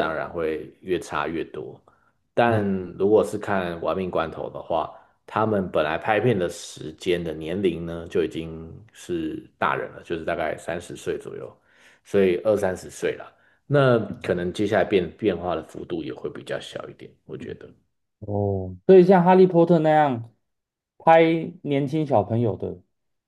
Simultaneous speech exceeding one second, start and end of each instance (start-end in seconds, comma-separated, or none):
none